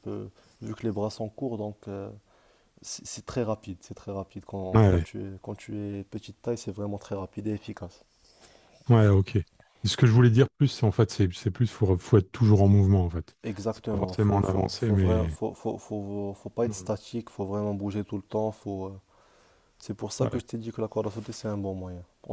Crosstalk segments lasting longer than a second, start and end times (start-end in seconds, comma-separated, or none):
13.4-15.3